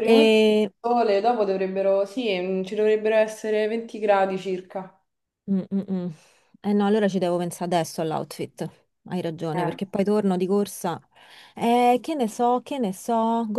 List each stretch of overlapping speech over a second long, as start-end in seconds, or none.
none